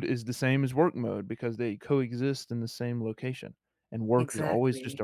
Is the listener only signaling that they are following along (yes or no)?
yes